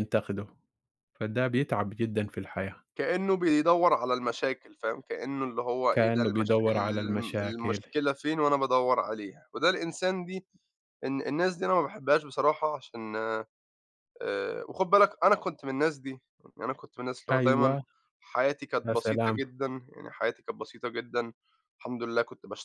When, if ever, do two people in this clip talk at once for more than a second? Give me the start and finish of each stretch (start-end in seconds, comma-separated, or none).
5.9-7.8